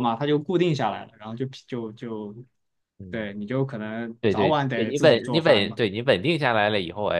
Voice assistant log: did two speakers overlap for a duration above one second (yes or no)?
yes